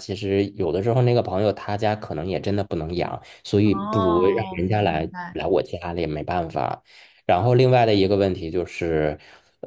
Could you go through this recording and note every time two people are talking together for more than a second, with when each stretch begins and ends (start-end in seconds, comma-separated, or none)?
3.6-5.4